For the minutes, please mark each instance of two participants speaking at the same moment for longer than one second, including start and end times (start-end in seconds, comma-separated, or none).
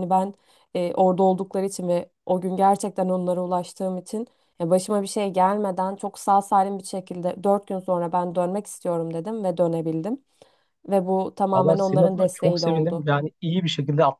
11.5-13.1